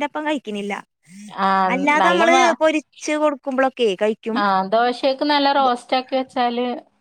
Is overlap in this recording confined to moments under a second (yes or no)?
yes